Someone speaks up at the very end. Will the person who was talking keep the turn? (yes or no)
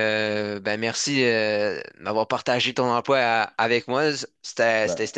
yes